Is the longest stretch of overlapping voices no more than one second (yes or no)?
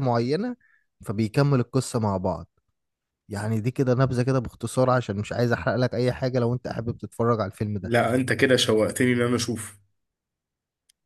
yes